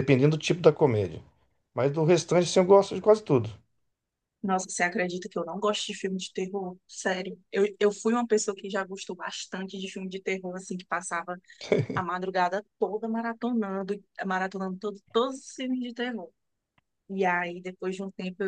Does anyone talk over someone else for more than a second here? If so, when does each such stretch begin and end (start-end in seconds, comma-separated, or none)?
none